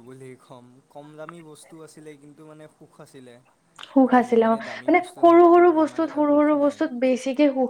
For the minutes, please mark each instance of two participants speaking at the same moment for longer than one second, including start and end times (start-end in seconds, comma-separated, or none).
4.1-6.8